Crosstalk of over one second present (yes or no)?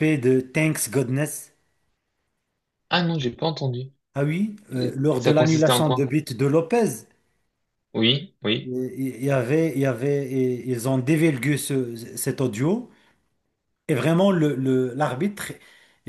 yes